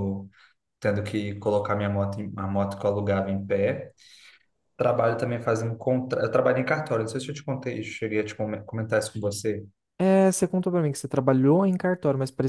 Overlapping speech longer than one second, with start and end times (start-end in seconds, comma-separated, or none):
none